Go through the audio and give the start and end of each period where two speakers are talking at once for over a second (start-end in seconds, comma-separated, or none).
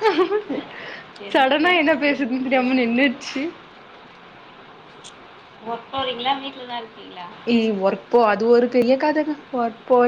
1.3-3.2